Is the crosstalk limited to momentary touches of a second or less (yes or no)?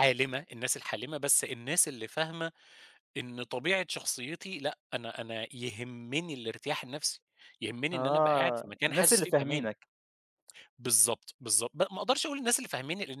no